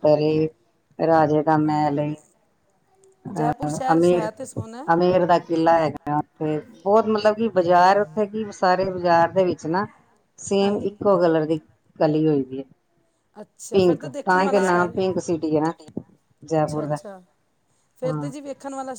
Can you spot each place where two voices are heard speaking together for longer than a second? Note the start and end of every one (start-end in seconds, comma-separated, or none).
3.4-4.9, 13.7-14.9